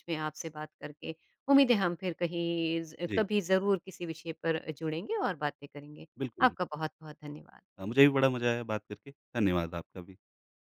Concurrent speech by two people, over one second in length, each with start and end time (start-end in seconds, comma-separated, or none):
none